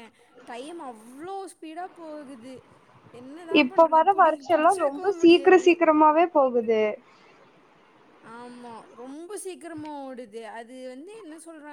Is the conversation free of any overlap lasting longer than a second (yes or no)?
no